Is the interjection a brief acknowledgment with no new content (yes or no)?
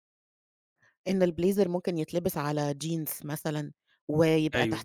yes